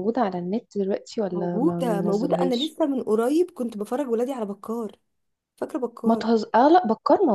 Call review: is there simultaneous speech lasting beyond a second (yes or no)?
yes